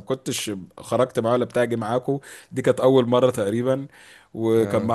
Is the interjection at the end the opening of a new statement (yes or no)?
no